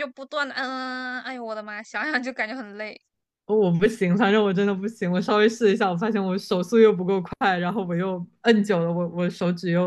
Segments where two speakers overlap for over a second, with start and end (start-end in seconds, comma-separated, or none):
none